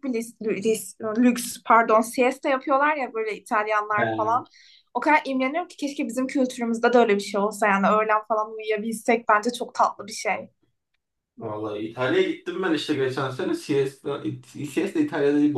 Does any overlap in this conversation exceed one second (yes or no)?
no